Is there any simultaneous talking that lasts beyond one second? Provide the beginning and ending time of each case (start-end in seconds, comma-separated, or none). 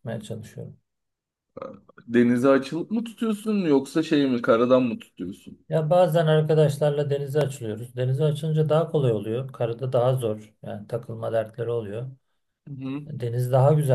none